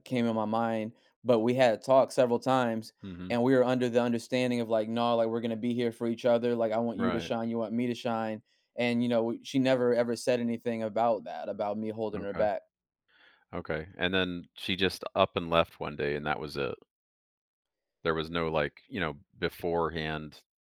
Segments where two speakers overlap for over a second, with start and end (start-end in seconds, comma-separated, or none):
none